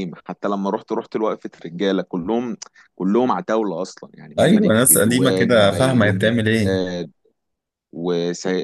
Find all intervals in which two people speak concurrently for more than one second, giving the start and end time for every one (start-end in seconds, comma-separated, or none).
4.4-6.7